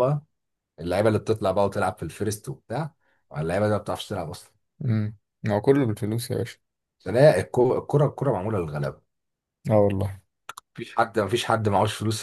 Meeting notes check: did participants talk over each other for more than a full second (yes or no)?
no